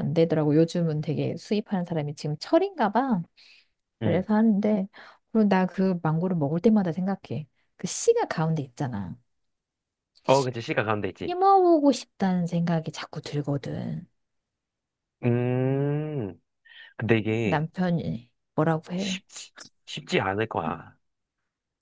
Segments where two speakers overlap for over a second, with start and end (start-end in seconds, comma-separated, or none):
none